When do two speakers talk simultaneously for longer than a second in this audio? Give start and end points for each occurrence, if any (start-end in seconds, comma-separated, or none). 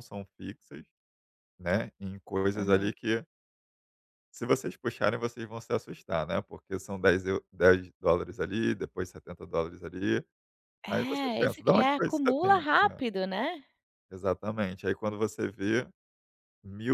10.9-12.6